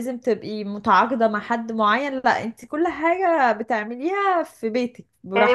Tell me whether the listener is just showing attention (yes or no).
no